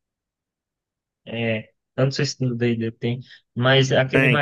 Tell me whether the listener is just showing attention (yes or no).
no